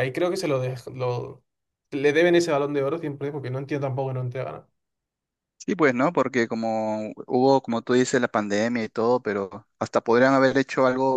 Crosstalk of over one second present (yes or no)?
no